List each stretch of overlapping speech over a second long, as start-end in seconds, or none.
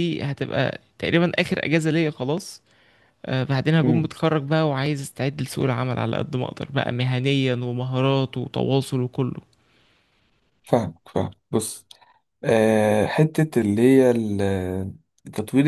none